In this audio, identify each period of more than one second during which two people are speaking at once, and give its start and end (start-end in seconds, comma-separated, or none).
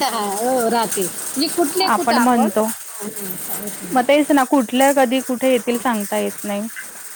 none